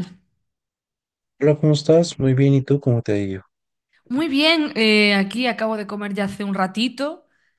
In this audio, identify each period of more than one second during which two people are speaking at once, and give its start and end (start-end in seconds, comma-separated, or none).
none